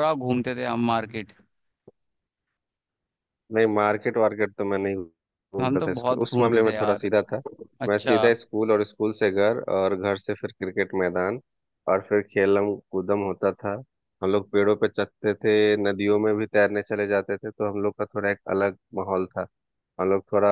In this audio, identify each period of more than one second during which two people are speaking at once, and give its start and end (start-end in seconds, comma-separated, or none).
5.6-7.1